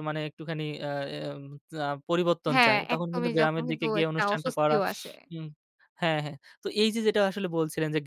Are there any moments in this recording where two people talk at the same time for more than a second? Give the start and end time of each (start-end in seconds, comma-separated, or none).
2.5-4.8